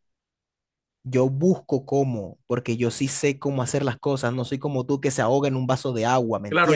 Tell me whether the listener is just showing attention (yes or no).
no